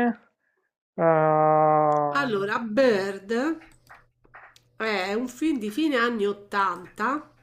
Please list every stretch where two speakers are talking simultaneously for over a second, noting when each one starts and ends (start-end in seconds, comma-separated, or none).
none